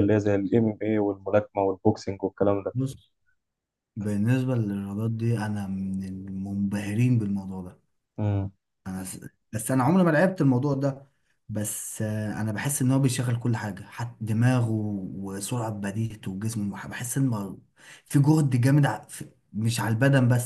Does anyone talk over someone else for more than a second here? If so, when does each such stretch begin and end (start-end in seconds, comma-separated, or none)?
none